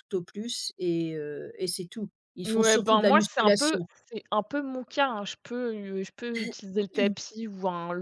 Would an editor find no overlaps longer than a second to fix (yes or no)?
no